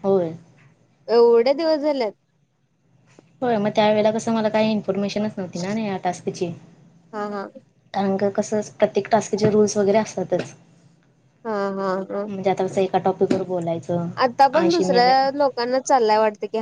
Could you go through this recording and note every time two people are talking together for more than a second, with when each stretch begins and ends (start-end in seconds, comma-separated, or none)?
none